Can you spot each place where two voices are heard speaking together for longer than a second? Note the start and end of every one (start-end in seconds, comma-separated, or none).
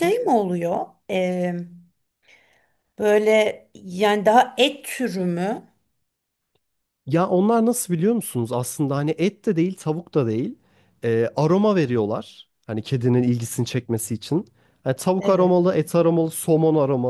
none